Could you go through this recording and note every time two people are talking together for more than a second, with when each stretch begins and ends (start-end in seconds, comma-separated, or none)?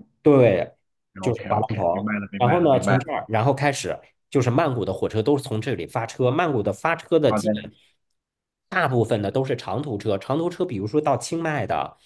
1.2-3.1